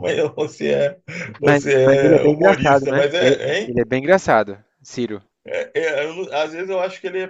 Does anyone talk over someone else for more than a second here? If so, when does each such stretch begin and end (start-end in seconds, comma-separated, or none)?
1.4-3.8